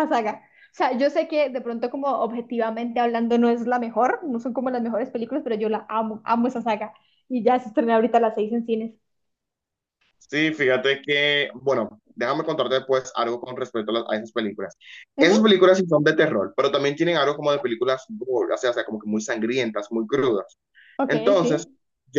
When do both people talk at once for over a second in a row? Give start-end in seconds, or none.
none